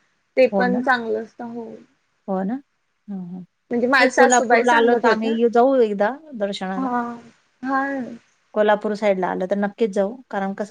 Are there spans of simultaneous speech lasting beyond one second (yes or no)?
yes